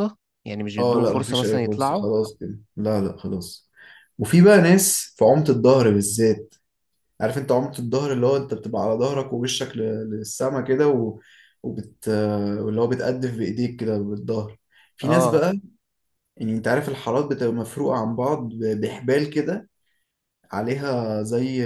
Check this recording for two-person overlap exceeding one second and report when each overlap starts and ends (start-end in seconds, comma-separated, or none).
0.8-2.1